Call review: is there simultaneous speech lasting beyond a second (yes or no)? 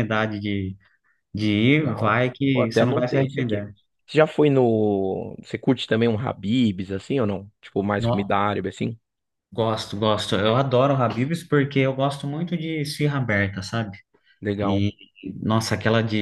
yes